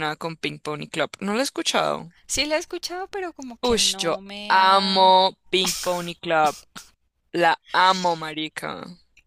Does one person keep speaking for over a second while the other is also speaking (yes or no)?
yes